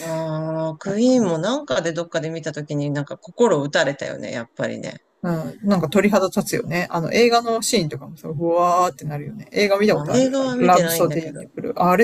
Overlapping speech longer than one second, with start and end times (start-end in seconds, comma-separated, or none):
9.9-11.4